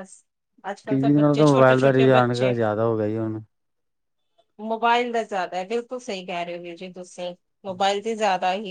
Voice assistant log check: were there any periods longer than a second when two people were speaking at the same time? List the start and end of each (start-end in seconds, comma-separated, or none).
0.9-2.5